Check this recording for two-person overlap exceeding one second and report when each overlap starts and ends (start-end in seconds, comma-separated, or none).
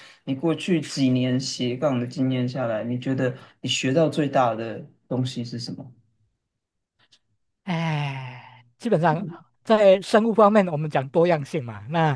none